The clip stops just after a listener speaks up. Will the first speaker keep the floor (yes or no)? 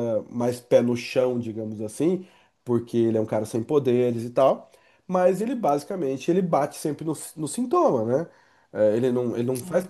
yes